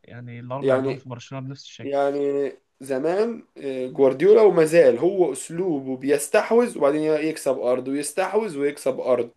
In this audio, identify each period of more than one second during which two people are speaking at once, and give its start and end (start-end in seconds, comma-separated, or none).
none